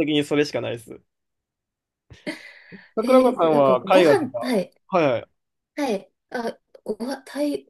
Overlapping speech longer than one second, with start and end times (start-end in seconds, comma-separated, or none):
3.0-4.7